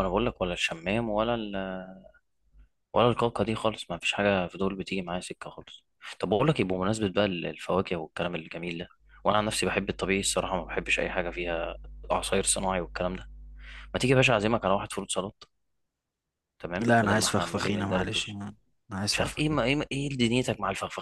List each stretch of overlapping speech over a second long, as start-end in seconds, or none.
16.8-18.4